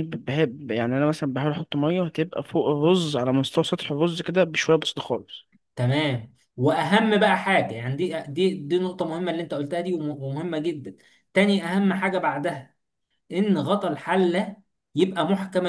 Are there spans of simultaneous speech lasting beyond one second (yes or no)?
no